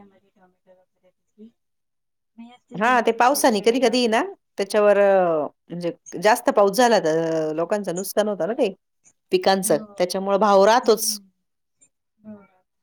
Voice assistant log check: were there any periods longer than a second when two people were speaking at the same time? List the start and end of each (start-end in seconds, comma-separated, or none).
2.8-4.3